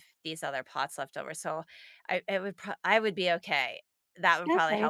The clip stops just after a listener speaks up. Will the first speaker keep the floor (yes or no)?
no